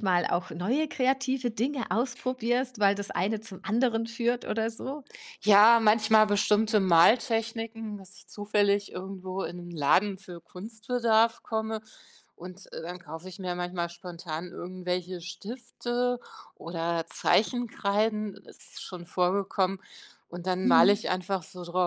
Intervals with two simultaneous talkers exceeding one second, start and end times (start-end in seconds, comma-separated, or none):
none